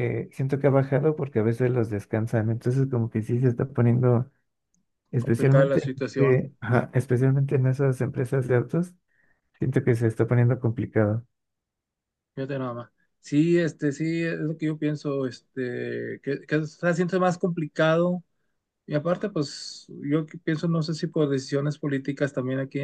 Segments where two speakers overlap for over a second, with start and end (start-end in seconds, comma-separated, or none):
5.2-6.4